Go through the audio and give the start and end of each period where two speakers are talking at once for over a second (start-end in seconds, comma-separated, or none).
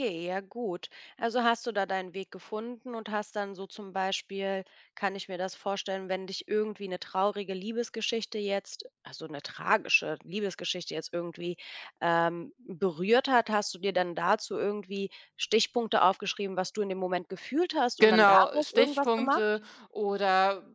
18.0-19.6